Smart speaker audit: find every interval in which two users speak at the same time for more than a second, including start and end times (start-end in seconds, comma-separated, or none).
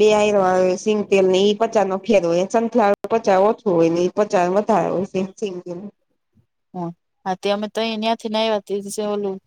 none